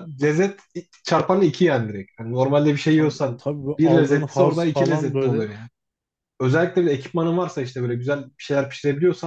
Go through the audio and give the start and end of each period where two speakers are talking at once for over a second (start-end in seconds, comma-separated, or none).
2.9-5.5